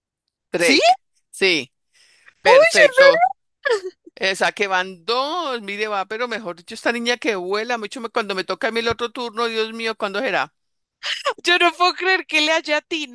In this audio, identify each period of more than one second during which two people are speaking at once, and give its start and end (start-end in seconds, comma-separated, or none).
none